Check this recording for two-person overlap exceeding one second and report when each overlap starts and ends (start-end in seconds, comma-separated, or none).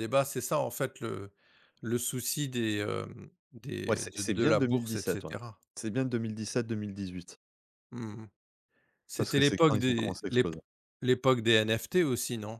3.9-5.3, 9.2-10.5